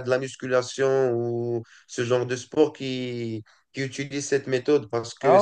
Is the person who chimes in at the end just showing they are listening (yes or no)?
yes